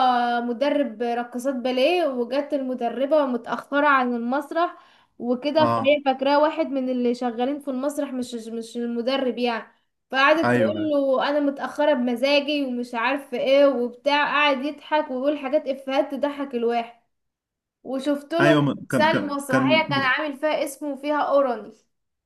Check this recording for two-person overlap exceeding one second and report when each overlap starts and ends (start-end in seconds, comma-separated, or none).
18.4-20.1